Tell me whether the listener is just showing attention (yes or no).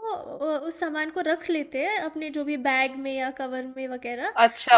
no